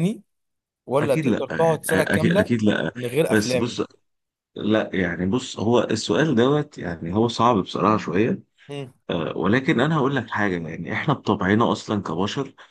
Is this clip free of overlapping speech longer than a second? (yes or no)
no